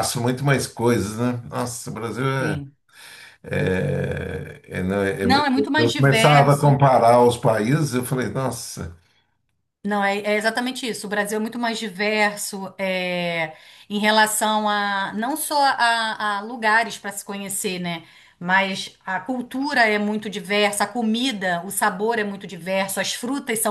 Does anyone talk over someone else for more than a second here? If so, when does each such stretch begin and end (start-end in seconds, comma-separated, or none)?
5.2-6.7